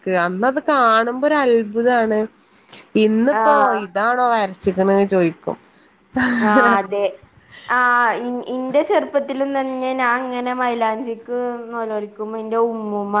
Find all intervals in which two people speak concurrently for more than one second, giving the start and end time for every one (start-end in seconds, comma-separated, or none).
none